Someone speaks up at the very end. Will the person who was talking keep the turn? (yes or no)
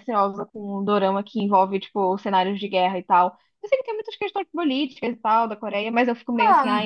no